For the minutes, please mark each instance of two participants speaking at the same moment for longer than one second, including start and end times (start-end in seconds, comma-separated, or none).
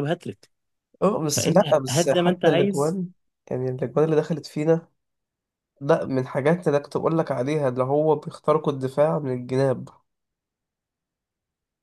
1.3-3.0